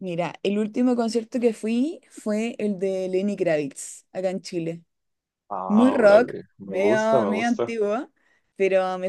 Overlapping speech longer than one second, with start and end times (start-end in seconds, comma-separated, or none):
5.7-7.8